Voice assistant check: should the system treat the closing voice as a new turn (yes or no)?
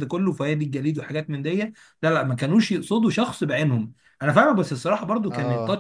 no